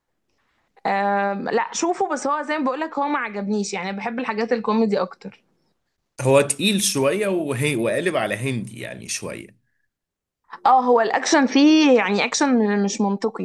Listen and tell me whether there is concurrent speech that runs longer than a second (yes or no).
no